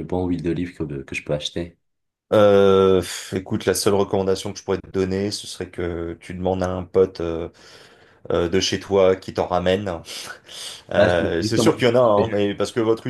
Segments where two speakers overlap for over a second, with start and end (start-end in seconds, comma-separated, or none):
10.9-12.4